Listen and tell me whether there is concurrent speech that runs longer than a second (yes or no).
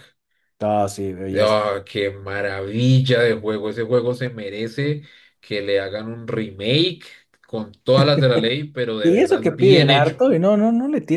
yes